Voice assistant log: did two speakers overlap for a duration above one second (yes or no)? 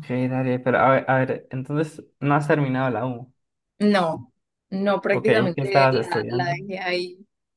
yes